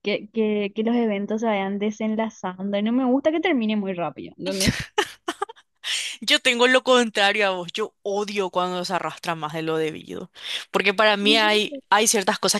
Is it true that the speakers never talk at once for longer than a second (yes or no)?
yes